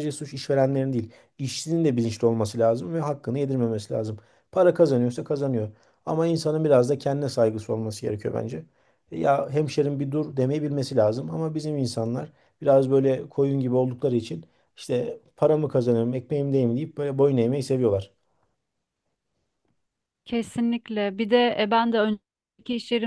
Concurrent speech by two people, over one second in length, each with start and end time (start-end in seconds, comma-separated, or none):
none